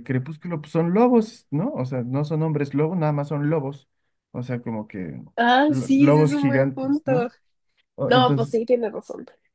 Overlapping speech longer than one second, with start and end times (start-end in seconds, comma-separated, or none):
5.7-7.3